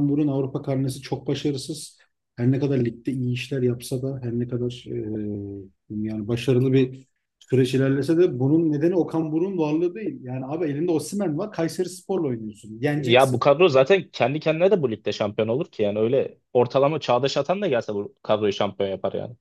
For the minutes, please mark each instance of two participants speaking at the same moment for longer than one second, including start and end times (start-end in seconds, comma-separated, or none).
none